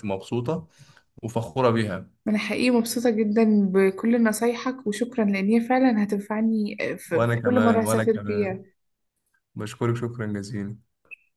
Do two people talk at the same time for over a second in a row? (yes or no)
yes